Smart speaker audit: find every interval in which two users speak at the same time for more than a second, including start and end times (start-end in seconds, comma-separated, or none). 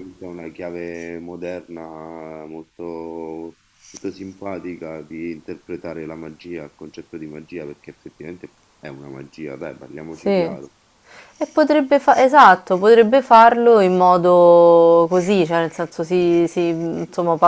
none